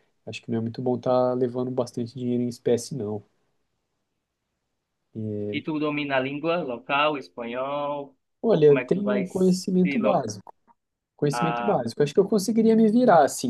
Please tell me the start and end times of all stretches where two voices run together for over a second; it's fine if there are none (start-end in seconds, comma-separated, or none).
8.5-10.1